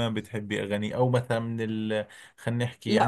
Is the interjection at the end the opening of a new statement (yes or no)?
yes